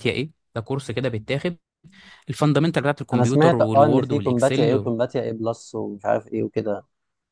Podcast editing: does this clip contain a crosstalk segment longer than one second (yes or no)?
yes